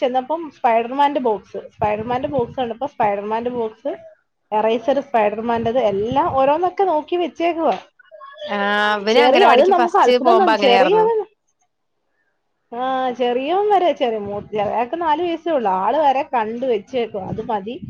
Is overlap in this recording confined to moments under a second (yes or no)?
no